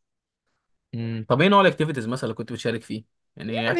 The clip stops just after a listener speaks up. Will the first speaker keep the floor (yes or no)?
no